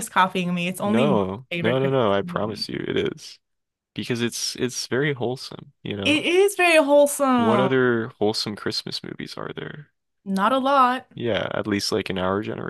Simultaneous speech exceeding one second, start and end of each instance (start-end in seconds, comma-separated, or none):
0.8-2.7